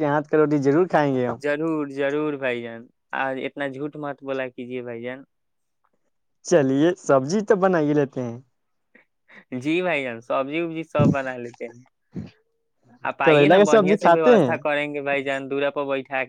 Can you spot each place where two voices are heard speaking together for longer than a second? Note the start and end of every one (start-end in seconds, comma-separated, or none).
13.2-14.6